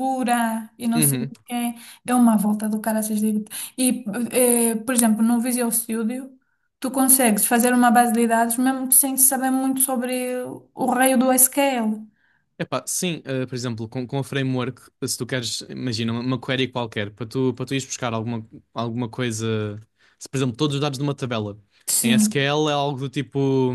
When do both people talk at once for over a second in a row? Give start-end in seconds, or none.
none